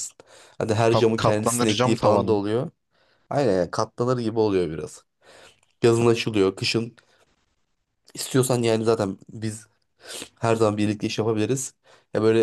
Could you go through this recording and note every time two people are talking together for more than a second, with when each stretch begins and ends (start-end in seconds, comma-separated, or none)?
0.8-2.4